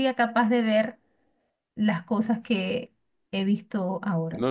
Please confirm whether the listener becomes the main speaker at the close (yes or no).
yes